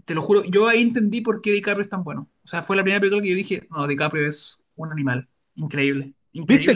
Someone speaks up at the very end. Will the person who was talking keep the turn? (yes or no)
no